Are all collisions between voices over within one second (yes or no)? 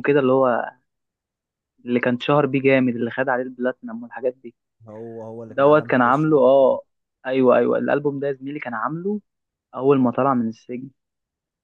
no